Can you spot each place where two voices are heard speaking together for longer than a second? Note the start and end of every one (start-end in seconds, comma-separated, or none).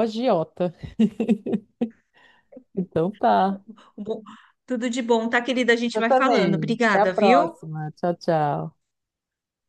6.0-7.5